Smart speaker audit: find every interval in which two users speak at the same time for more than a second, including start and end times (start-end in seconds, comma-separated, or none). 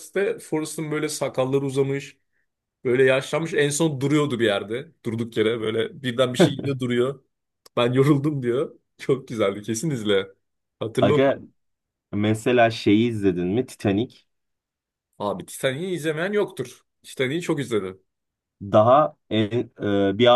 none